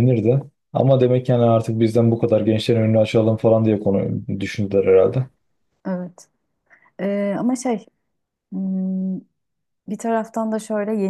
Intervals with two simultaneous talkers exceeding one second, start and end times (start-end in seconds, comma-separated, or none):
none